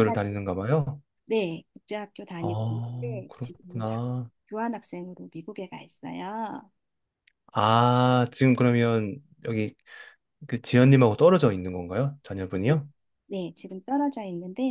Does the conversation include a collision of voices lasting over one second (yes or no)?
yes